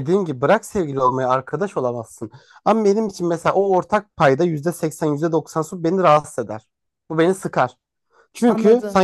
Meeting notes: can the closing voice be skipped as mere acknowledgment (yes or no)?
yes